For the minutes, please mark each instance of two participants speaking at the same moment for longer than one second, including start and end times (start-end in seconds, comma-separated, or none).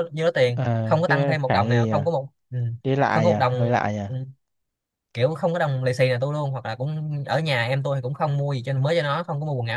0.6-2.1